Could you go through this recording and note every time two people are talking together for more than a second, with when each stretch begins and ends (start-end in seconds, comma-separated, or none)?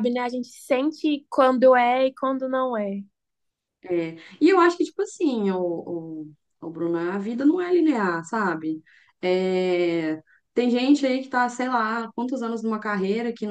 none